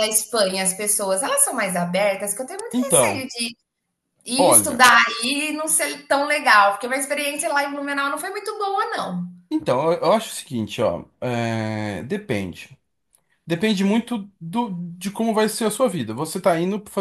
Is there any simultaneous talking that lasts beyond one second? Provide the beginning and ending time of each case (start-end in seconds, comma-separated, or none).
none